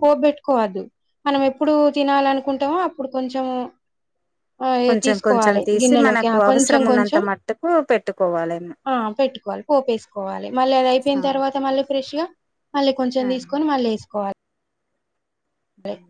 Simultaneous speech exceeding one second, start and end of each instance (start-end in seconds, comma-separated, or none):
4.9-7.2